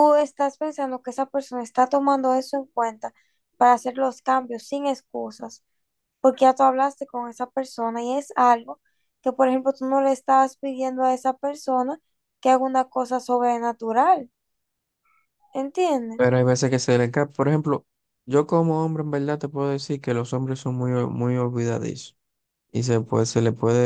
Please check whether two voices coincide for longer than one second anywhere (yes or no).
no